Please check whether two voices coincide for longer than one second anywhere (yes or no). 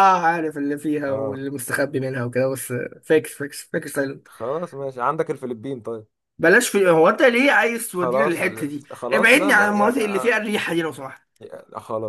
yes